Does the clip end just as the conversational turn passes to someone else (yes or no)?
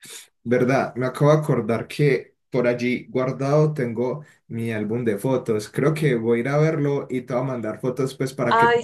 yes